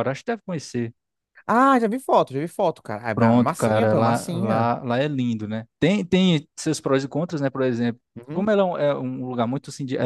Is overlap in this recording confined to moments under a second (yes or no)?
no